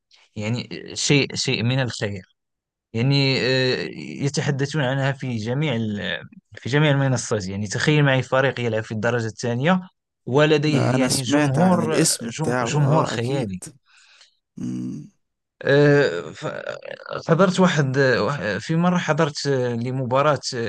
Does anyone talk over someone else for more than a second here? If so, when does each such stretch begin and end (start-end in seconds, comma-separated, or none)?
10.6-13.5